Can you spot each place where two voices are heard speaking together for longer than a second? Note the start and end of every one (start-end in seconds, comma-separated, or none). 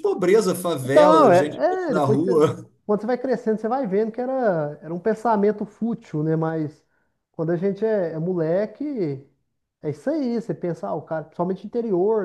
0.8-2.3